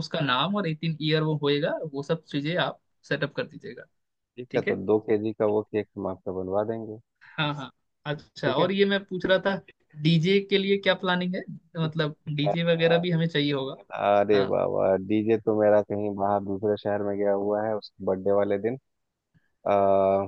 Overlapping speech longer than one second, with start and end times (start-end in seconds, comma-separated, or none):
none